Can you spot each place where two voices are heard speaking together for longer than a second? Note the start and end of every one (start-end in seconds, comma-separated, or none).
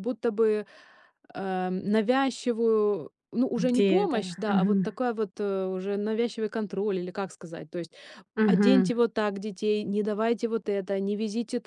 3.5-5.0